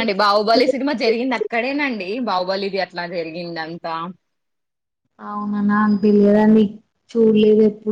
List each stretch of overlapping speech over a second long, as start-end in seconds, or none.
none